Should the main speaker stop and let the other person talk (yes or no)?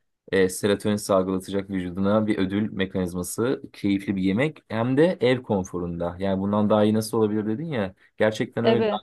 no